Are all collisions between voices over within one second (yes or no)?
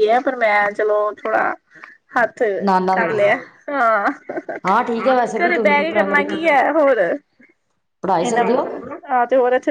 no